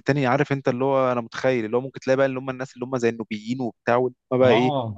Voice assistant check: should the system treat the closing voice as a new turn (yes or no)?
yes